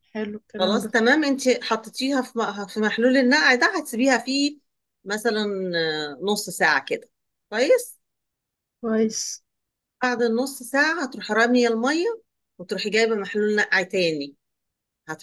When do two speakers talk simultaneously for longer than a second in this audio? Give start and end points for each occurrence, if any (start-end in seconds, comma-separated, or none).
none